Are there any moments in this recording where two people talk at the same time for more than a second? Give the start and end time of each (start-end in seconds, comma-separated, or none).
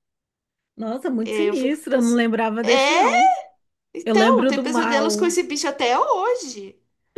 1.2-3.2, 4.0-5.4